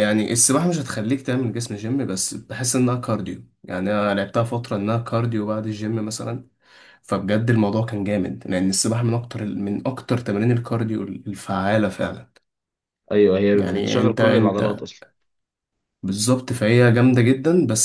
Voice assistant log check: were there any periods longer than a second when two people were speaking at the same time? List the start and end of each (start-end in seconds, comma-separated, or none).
13.5-14.8